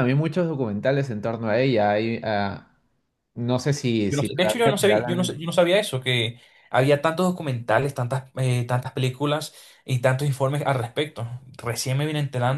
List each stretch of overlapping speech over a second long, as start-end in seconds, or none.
4.1-5.4